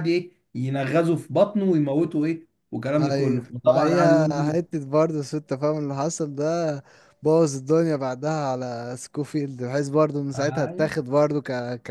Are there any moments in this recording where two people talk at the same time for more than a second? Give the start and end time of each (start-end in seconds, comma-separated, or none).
3.0-4.6